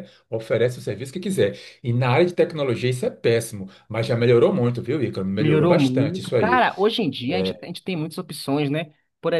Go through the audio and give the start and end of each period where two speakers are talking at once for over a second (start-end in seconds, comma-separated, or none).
5.4-6.6